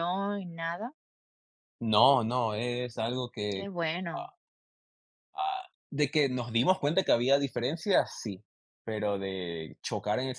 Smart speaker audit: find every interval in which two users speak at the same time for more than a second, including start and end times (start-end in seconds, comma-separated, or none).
none